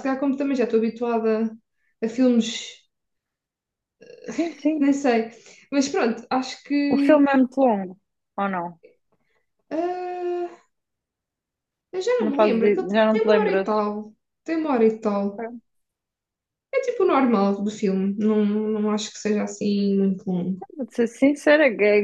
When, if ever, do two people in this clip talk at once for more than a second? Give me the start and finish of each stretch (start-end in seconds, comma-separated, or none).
12.2-13.8